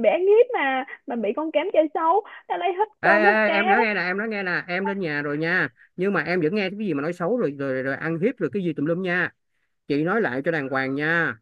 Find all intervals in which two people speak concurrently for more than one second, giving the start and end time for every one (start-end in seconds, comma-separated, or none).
none